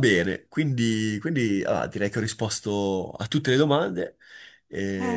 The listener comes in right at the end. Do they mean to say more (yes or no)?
yes